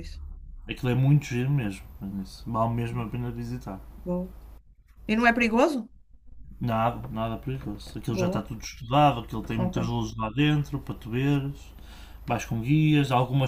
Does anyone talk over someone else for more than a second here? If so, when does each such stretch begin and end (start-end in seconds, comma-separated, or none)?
none